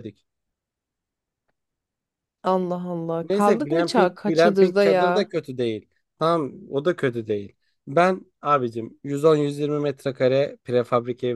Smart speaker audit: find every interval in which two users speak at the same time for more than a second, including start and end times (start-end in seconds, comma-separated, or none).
3.2-5.3